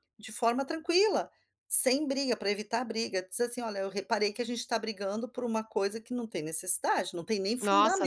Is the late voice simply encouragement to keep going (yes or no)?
no